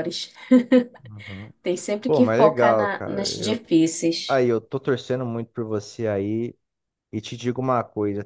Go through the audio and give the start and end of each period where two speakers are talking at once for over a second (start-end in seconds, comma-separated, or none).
2.1-3.6